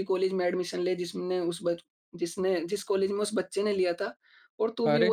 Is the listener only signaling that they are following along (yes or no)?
yes